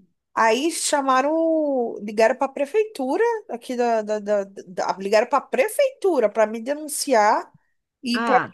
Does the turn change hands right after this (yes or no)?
no